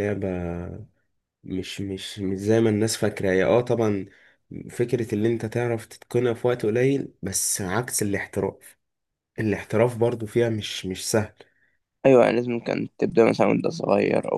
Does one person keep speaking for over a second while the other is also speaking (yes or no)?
no